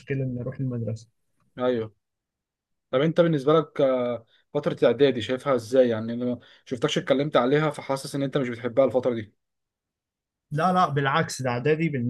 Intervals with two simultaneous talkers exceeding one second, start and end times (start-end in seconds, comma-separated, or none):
none